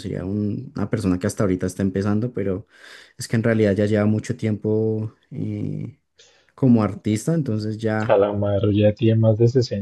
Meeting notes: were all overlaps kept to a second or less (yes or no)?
yes